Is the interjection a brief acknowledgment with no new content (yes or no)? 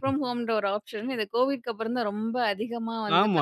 no